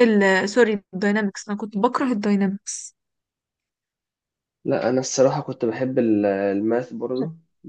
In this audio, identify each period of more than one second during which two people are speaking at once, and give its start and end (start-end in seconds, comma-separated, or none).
none